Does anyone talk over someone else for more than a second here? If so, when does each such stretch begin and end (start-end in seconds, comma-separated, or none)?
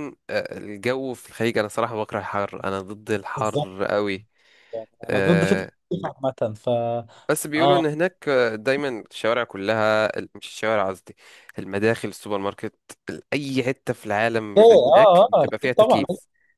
14.6-16.0